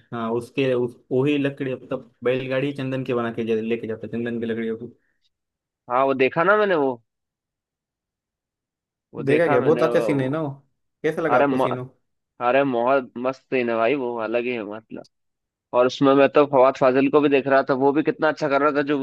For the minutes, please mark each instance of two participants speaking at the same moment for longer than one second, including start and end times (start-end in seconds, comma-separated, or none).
9.2-10.4